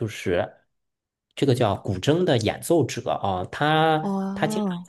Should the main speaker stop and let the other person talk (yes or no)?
no